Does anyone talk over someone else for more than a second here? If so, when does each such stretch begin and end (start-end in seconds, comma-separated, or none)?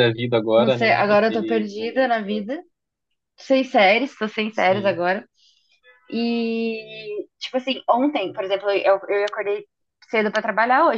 0.6-2.1